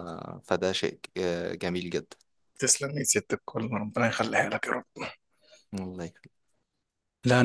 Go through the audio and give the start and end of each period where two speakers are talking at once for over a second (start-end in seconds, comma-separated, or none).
none